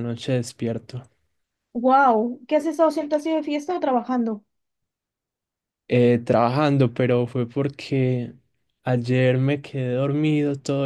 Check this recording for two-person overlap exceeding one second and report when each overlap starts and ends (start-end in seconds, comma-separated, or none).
none